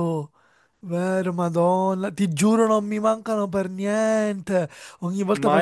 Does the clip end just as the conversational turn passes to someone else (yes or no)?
no